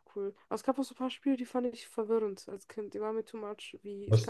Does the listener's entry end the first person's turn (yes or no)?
no